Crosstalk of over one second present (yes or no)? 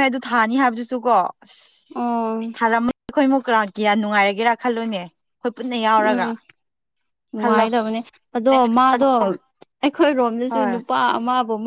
no